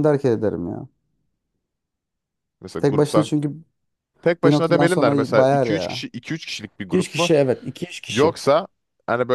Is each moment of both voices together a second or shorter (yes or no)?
no